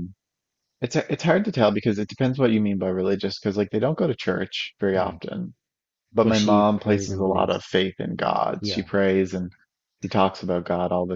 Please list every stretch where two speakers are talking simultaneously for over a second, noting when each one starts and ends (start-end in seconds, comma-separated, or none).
6.2-7.6